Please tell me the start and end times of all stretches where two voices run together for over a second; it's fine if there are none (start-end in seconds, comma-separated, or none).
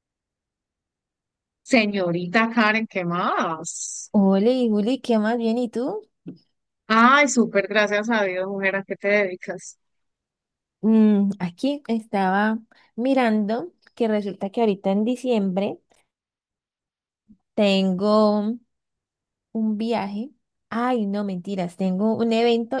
none